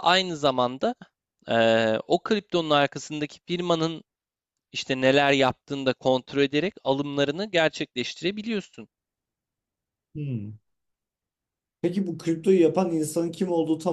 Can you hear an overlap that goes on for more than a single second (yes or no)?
no